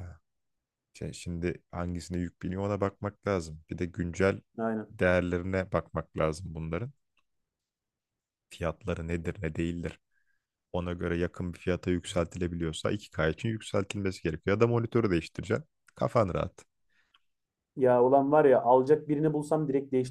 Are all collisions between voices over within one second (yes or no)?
yes